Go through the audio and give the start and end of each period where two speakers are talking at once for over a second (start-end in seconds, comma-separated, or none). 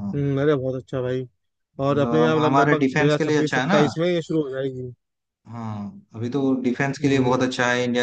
1.9-3.8